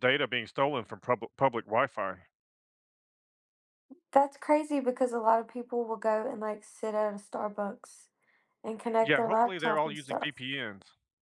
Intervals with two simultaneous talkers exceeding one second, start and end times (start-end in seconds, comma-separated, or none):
9.0-10.4